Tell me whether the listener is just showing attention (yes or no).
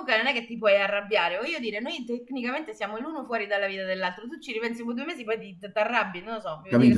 no